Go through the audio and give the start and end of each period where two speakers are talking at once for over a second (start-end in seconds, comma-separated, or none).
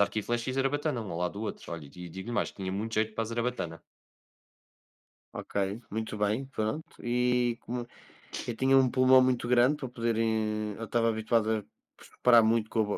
none